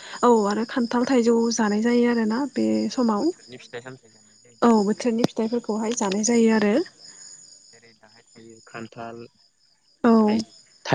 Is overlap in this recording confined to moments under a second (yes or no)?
no